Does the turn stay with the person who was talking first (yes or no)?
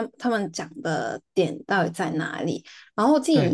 yes